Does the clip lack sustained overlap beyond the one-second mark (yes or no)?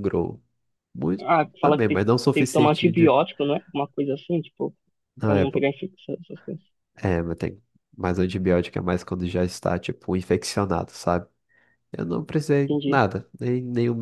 no